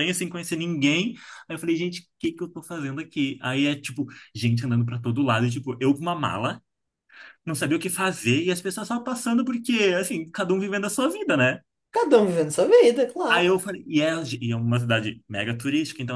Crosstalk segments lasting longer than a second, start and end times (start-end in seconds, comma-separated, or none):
none